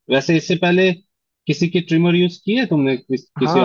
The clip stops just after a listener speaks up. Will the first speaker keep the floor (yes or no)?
no